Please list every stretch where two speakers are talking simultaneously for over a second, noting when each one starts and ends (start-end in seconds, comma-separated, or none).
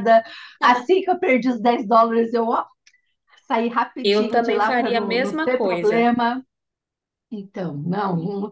4.0-6.1